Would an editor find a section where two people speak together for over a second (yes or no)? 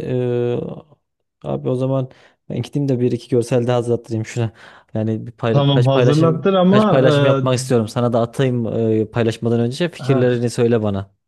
yes